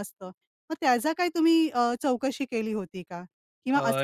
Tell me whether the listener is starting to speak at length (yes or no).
no